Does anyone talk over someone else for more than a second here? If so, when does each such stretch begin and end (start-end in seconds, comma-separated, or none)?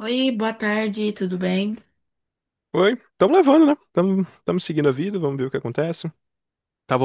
none